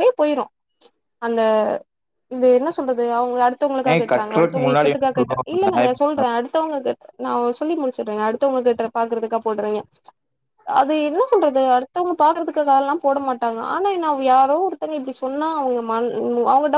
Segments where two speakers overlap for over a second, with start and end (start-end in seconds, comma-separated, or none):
3.9-5.9